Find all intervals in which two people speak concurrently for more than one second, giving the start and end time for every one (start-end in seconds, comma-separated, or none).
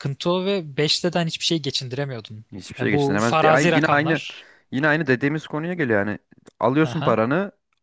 2.5-4.2